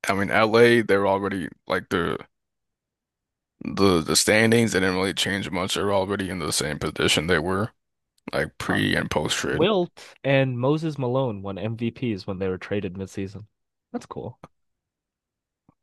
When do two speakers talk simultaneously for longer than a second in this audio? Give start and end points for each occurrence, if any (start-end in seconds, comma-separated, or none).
none